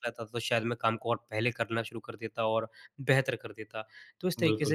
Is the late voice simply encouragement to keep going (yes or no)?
yes